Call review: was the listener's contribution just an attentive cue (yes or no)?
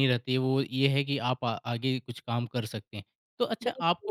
yes